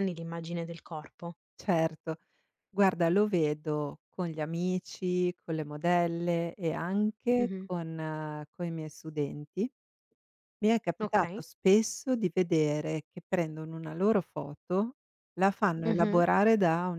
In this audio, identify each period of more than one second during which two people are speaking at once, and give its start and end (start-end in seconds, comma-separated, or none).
none